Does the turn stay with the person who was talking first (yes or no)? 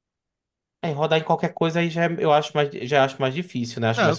no